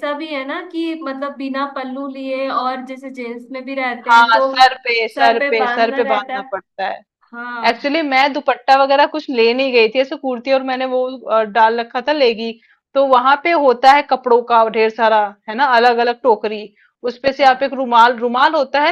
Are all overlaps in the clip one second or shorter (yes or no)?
no